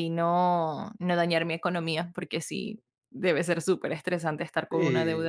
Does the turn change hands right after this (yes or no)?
yes